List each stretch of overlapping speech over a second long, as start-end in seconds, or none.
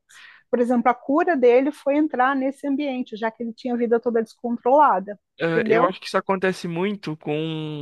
none